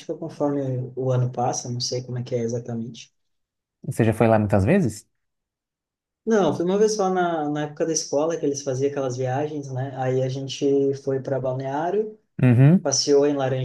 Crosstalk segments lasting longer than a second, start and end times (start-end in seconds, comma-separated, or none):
none